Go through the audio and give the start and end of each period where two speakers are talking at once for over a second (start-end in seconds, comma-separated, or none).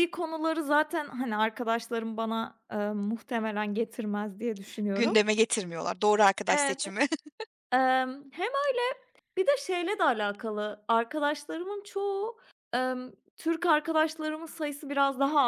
none